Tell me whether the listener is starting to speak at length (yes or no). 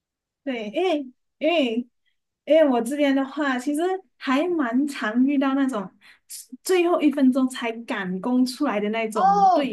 no